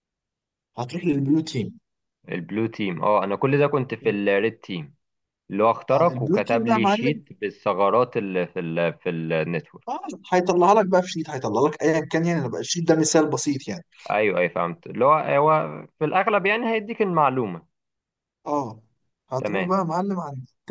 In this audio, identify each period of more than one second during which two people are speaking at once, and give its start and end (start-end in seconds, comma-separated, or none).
5.9-7.2